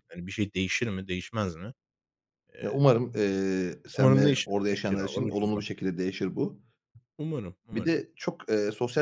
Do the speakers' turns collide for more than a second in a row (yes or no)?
yes